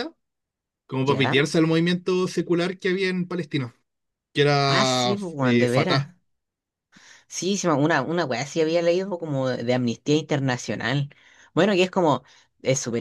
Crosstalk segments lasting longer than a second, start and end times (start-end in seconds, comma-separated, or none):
4.6-6.1